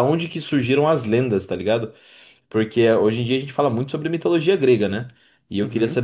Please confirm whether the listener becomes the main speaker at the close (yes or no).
no